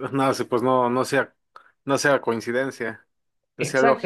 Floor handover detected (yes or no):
yes